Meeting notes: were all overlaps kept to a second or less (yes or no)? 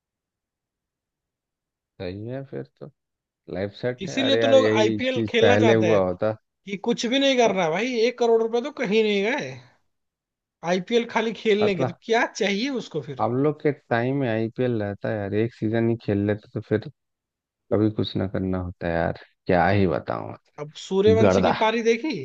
no